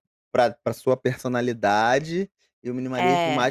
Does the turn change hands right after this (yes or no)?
no